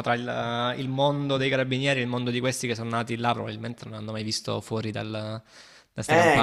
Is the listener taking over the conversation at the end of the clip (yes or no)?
yes